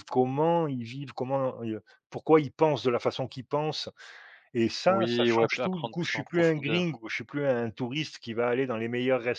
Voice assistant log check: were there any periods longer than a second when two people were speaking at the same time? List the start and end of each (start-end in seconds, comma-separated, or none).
4.9-7.0